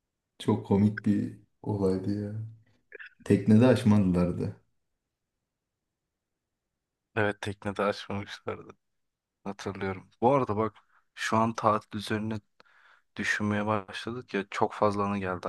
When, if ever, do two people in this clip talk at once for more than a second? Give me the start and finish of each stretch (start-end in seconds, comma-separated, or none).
none